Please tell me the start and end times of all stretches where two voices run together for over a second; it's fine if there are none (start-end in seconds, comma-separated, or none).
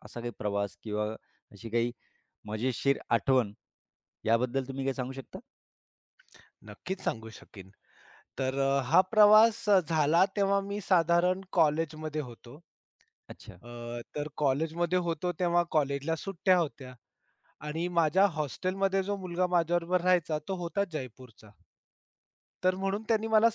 none